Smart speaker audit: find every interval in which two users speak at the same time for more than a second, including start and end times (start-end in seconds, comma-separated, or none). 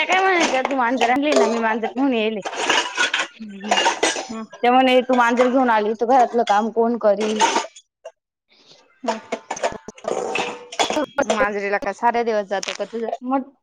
none